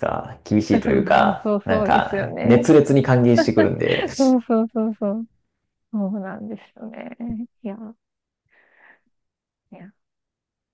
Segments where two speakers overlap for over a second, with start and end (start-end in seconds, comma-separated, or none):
0.7-2.6